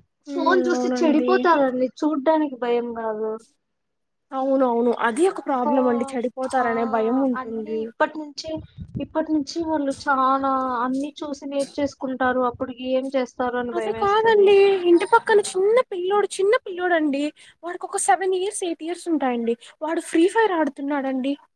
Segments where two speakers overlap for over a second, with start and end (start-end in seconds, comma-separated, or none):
none